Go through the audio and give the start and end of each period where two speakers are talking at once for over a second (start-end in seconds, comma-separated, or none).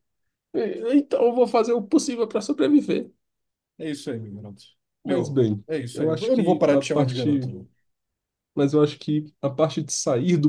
5.0-7.4